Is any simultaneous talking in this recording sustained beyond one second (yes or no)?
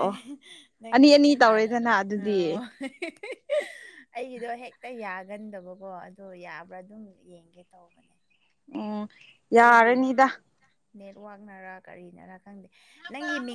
yes